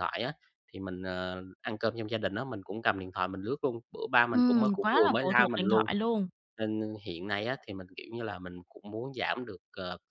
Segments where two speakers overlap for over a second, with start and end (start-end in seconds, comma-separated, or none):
4.3-5.9